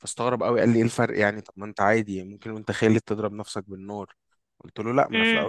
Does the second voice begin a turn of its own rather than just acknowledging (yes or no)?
no